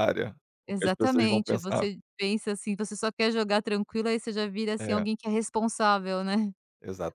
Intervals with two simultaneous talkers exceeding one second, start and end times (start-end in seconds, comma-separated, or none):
0.7-1.9